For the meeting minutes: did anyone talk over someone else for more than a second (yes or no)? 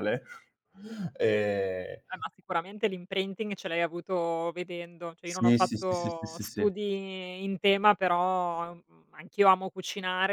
yes